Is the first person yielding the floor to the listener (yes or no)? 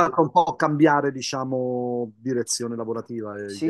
yes